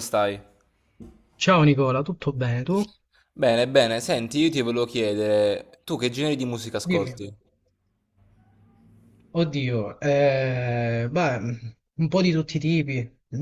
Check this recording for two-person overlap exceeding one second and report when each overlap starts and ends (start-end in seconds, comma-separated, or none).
none